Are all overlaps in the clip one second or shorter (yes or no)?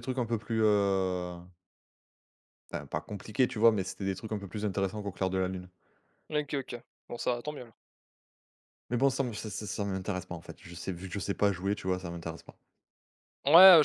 yes